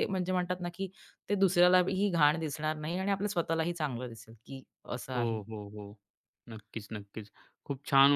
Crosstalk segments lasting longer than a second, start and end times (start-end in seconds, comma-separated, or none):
none